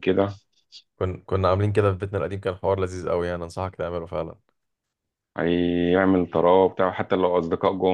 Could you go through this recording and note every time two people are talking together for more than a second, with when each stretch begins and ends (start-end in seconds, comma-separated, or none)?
none